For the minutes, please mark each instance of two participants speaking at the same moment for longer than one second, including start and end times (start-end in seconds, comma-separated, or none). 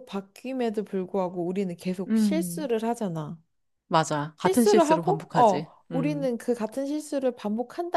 4.4-6.3